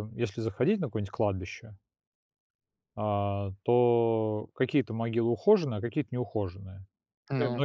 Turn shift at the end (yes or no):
no